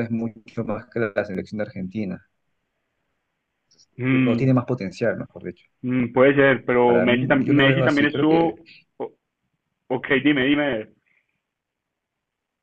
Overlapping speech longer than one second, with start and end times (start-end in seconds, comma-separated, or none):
6.8-8.5